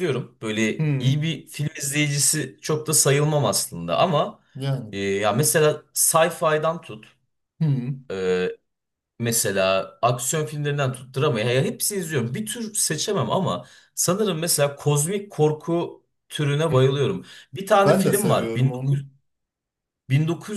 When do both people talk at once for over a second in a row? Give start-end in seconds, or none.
17.8-19.0